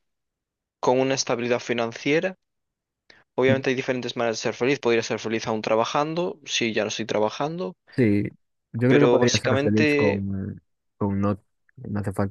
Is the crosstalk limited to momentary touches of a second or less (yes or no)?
no